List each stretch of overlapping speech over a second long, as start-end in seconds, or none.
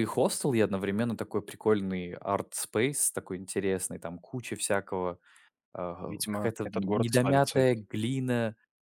6.0-7.8